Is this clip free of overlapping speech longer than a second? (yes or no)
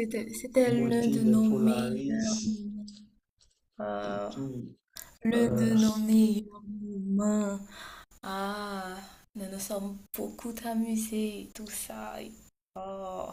no